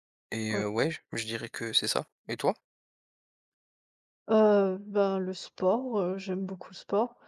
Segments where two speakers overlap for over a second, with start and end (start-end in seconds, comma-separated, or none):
none